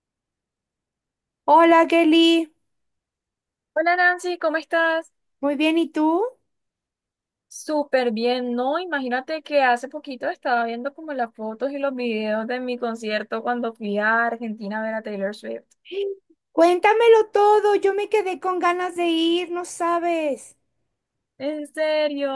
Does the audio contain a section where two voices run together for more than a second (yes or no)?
no